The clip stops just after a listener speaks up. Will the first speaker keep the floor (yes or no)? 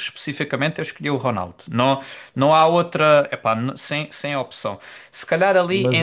yes